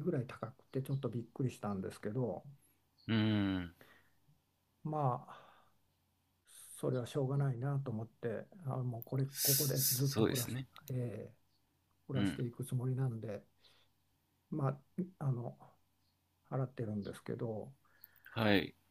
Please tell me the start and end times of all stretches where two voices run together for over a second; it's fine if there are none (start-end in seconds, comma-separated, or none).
9.3-10.7